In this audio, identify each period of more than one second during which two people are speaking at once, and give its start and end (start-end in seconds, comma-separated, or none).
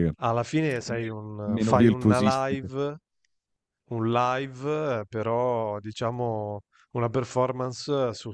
0.9-2.7